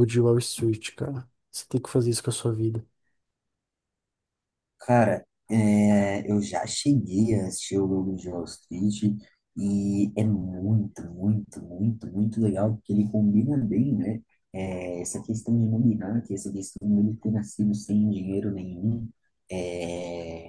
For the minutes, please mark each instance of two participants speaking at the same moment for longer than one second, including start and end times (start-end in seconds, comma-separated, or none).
none